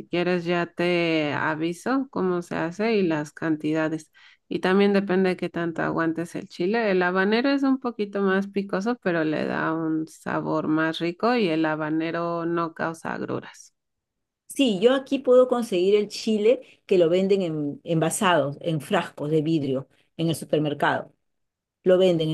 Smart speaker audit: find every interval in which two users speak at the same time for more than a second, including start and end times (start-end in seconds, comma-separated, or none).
none